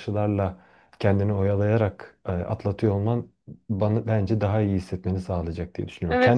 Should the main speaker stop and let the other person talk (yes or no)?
yes